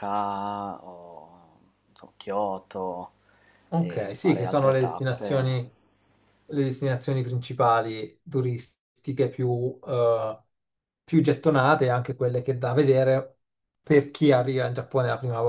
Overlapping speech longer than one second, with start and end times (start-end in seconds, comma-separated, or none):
3.8-5.6